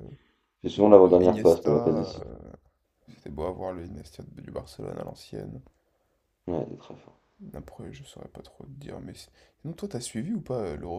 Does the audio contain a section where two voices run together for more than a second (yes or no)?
yes